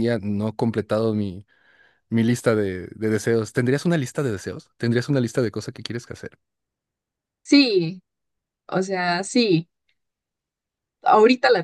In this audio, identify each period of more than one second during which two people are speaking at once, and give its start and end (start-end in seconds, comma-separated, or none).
none